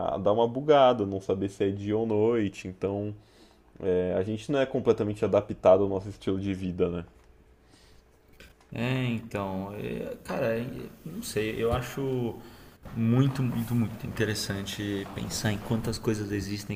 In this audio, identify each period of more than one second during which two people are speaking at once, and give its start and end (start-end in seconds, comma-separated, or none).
none